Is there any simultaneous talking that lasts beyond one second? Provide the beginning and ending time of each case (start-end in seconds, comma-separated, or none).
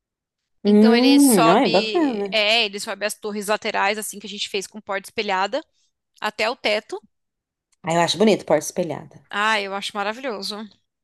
0.7-2.4